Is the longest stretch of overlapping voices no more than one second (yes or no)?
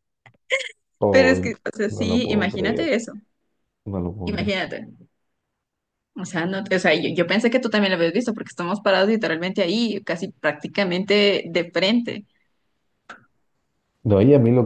no